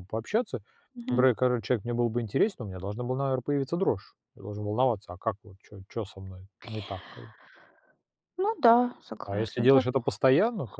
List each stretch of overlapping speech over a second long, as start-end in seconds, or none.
none